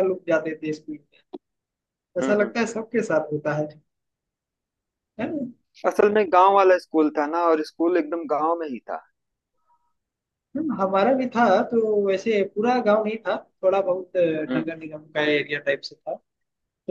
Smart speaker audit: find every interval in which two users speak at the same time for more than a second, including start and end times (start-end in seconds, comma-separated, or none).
none